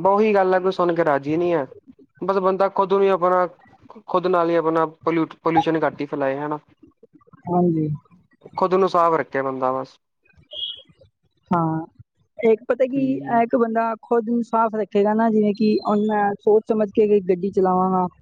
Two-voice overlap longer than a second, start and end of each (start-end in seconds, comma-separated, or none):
none